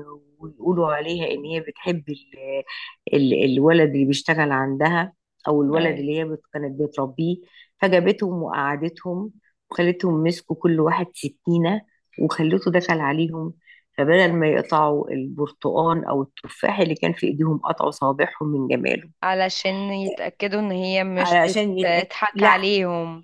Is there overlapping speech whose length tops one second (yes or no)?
yes